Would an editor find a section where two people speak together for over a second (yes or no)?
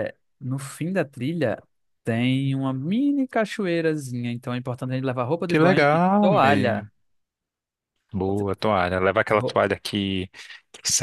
yes